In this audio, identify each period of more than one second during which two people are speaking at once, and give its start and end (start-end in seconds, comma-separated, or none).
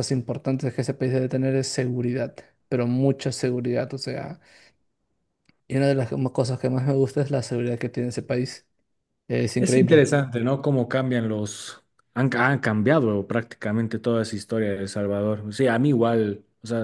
none